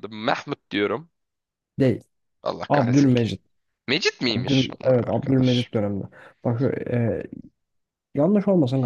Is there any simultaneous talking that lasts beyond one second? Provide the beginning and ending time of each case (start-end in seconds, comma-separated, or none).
4.3-5.7